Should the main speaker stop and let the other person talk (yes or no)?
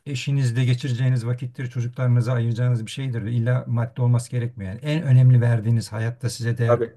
no